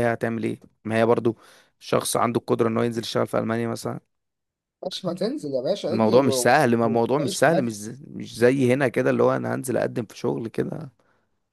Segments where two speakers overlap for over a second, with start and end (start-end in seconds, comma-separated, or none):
5.9-7.8